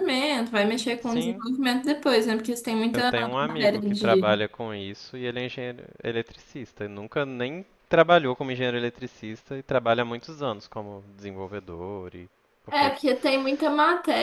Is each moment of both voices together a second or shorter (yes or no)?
no